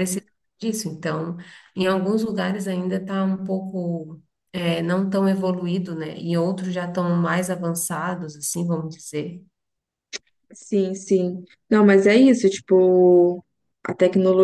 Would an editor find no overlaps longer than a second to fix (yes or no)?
yes